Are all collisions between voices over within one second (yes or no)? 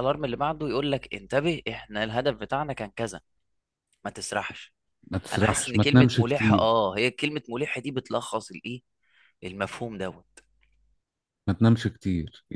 no